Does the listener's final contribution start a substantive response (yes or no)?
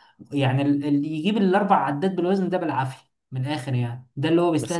no